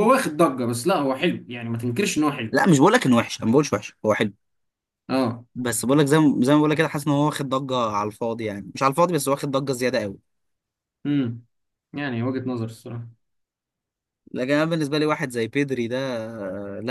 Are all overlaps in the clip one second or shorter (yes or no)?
yes